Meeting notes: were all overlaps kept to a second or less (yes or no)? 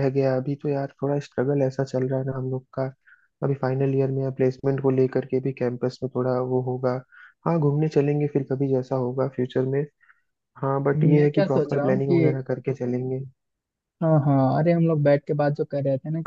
no